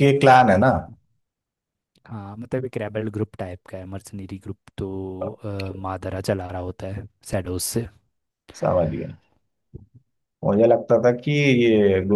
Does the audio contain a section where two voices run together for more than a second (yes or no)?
no